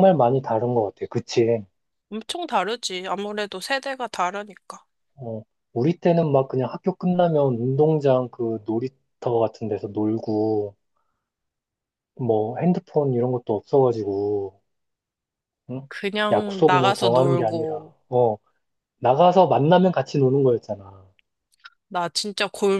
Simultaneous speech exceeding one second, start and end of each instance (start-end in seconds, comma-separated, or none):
16.3-17.9